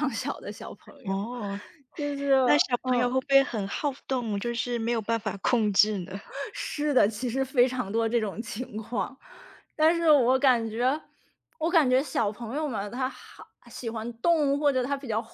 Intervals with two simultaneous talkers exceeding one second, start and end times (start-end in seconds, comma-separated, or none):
none